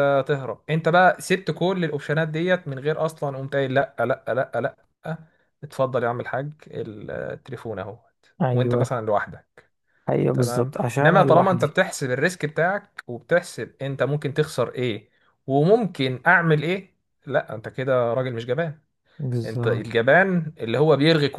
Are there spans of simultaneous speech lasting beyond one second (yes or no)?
yes